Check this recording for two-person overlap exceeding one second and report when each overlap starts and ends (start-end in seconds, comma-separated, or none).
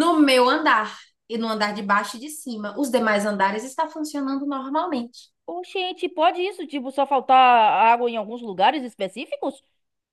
none